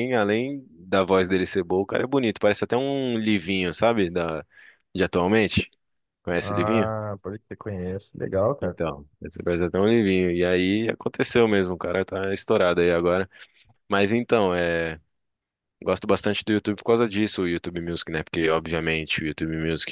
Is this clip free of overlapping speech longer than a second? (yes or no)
yes